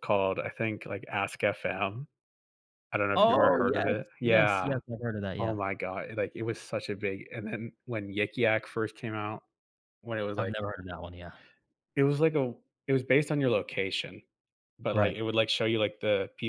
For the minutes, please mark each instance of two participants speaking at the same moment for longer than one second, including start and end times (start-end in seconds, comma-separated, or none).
3.2-4.7